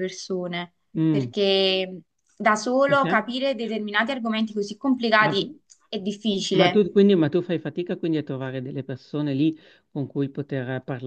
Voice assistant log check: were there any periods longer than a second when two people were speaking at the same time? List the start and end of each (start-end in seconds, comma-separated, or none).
none